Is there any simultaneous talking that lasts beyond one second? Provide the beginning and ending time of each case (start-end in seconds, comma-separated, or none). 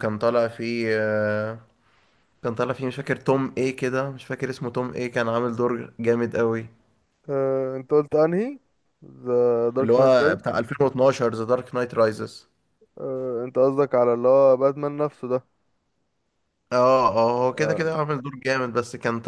none